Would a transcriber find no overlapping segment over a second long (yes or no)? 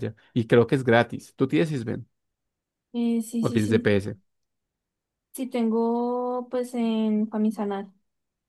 yes